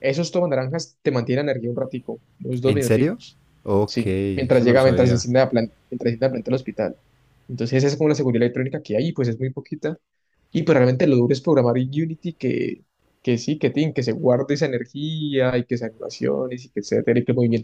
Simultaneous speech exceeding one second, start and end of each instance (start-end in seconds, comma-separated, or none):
3.9-5.2